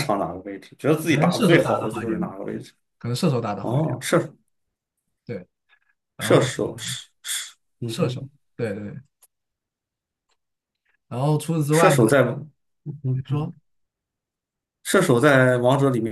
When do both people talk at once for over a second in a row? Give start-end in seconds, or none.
1.1-2.3